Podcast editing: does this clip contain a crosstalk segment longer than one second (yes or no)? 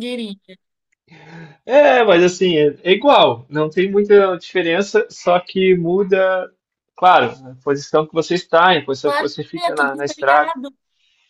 yes